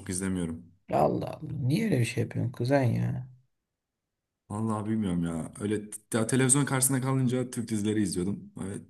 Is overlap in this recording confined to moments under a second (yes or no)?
yes